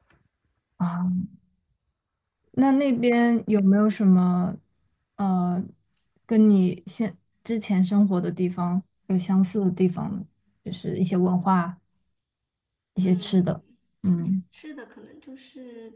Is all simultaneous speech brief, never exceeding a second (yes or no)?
yes